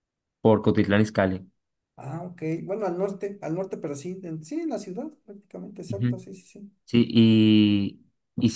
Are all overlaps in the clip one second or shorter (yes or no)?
yes